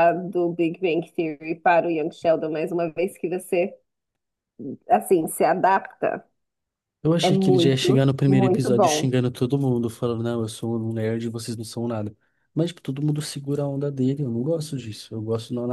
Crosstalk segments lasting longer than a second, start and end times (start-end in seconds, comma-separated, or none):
7.2-9.1